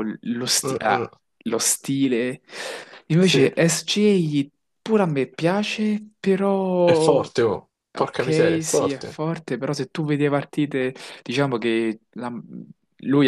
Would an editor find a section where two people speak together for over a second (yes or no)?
yes